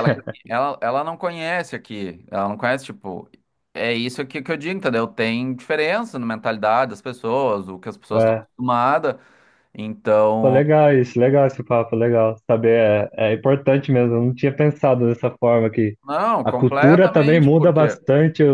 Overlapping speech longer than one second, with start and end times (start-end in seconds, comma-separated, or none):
16.4-18.0